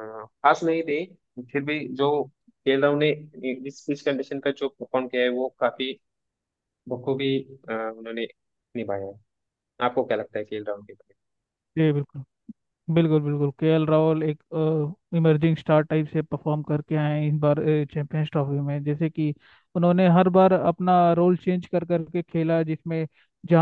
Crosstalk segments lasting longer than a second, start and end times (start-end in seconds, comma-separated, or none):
none